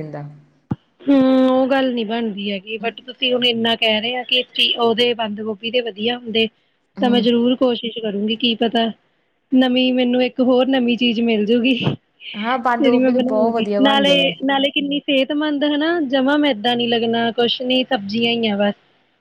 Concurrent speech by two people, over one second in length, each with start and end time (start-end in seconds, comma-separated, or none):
12.4-14.3